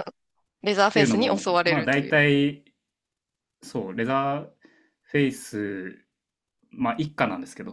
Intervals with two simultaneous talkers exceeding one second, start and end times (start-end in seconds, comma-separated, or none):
0.7-2.1